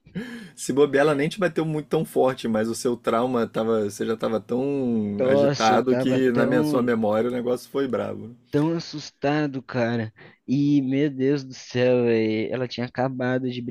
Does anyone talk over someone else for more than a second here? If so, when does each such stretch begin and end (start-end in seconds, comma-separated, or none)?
5.1-6.9